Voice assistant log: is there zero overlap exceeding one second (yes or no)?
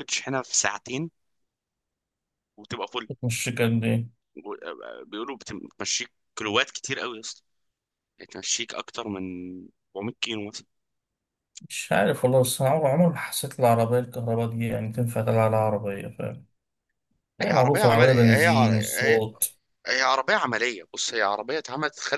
no